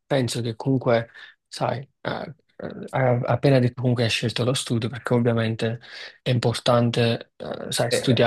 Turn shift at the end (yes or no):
no